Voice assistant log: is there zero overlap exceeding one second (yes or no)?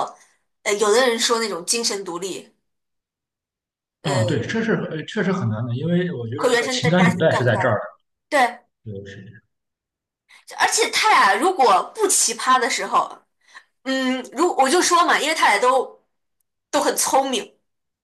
no